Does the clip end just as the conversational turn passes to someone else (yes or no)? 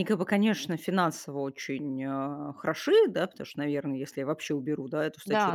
no